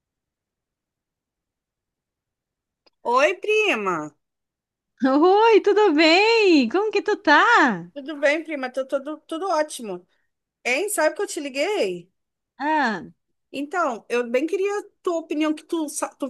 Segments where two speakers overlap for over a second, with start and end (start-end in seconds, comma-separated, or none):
none